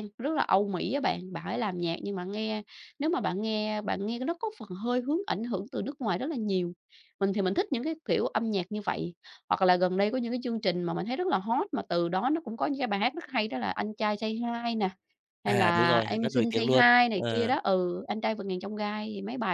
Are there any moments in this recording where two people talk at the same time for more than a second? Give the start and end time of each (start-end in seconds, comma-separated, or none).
15.4-17.5